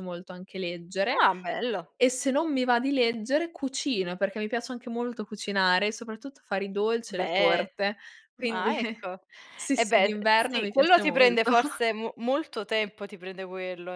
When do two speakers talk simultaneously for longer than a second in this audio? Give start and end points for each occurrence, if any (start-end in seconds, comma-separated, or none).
9.7-11.5